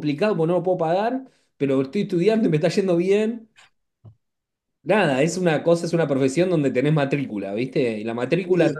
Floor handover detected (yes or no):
no